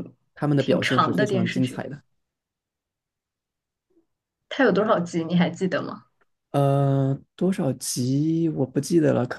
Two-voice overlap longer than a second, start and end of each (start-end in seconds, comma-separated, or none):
0.6-1.8